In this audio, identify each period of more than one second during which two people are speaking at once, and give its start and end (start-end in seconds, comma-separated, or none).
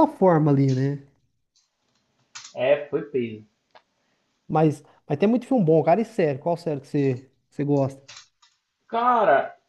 none